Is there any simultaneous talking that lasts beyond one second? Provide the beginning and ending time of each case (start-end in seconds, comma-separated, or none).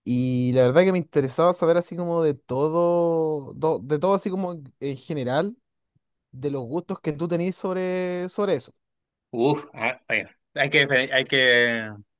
none